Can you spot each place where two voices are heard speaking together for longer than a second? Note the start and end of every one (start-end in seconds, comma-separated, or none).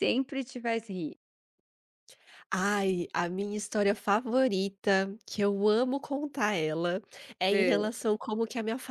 none